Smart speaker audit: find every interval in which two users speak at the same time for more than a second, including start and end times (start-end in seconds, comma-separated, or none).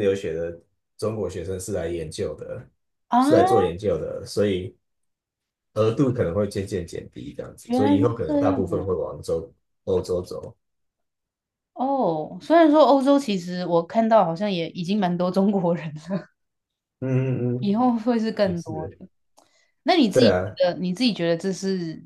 7.6-9.0